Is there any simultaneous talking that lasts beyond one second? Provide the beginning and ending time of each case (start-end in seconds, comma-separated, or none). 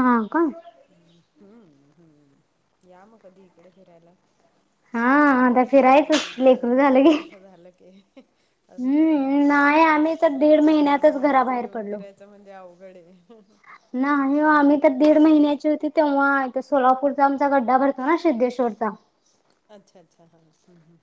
8.8-12.0